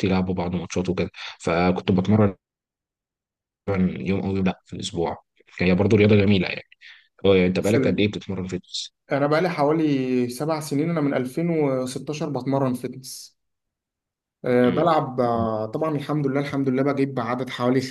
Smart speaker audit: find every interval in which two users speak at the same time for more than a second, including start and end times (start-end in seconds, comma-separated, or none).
none